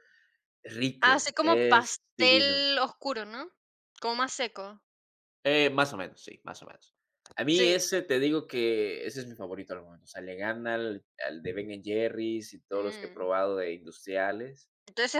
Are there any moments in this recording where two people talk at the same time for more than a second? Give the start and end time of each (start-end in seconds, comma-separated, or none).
1.0-2.6